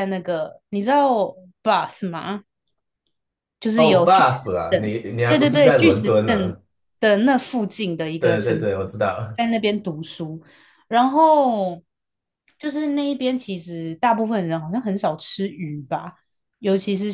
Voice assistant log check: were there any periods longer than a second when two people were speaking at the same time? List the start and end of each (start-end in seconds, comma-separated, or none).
3.8-6.6